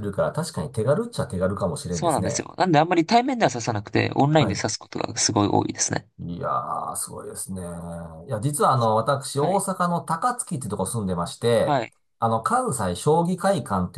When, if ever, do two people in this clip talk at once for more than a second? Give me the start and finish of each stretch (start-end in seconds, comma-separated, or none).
none